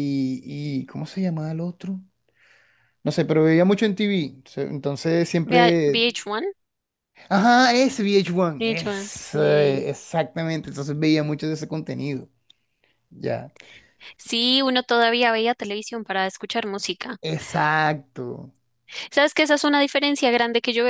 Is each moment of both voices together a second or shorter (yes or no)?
no